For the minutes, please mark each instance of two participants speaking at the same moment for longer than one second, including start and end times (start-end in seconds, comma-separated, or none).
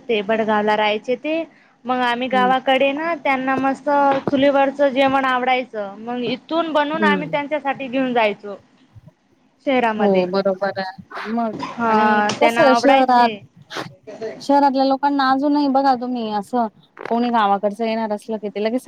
11.9-13.3